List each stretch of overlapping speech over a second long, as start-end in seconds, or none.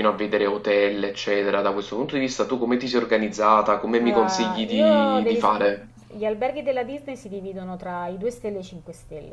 4.0-5.5